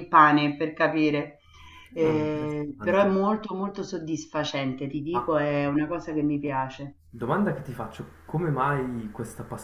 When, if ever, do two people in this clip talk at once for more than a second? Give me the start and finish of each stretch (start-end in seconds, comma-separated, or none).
2.0-3.2